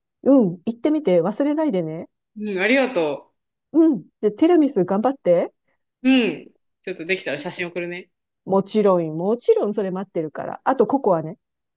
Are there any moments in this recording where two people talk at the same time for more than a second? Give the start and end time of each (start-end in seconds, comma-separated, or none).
none